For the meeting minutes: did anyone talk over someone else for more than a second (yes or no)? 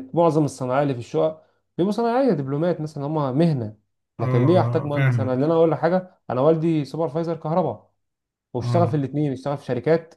yes